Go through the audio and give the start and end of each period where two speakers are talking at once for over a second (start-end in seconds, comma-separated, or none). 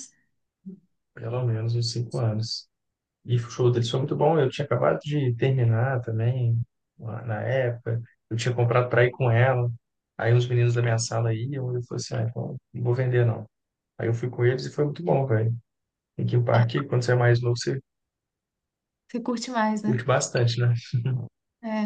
none